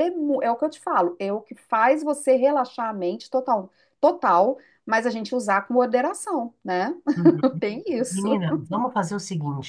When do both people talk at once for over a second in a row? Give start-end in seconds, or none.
none